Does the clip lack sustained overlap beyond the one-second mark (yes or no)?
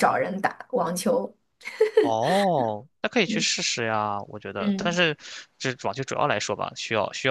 yes